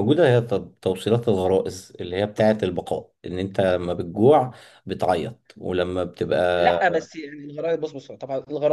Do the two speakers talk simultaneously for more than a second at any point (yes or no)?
no